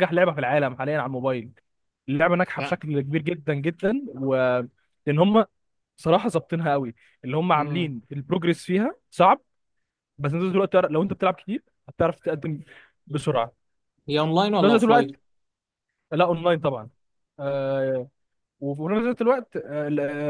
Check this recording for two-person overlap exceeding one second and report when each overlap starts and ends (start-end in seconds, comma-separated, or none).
none